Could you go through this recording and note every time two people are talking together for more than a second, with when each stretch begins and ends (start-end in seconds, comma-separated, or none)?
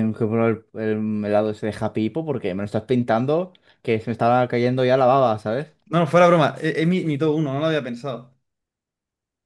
none